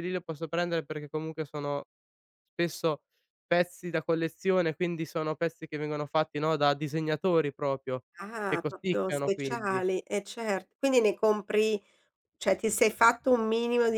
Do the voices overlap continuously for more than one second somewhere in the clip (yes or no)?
yes